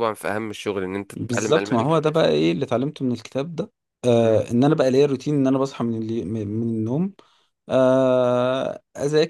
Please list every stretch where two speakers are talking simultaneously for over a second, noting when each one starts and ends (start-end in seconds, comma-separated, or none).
1.2-2.5